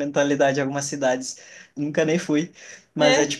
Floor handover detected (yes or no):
no